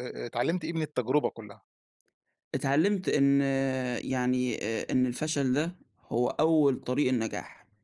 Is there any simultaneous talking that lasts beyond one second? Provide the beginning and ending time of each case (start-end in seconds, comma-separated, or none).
none